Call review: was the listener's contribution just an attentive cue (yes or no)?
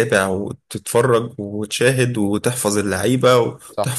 yes